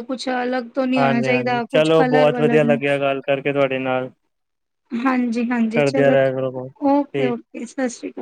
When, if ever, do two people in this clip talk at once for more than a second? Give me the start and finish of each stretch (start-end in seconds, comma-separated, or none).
1.0-2.6